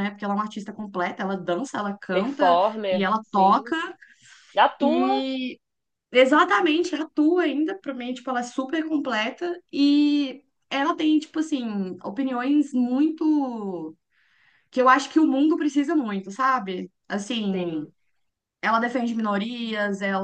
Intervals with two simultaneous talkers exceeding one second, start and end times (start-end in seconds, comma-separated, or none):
2.1-3.8